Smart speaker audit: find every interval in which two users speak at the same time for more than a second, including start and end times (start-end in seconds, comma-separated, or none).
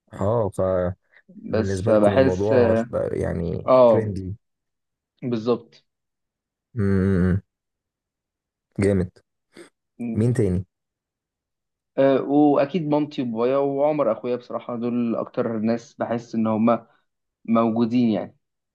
1.5-2.9